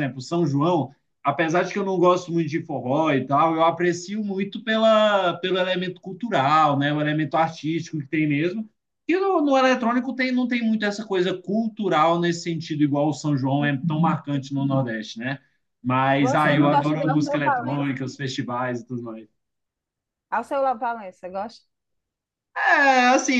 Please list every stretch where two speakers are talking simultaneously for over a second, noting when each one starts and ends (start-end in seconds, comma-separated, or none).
16.2-17.9